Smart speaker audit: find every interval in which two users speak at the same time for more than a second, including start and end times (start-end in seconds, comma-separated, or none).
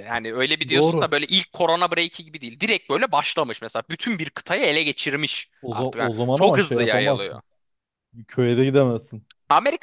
5.6-7.4